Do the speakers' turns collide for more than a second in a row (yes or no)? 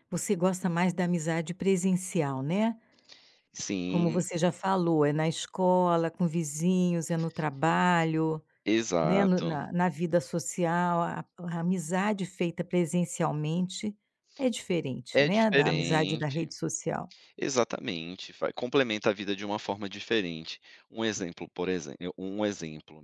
yes